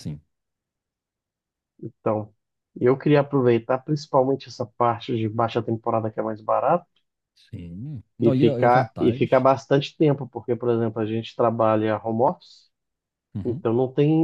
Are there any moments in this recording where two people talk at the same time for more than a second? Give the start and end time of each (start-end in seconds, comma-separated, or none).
8.2-9.5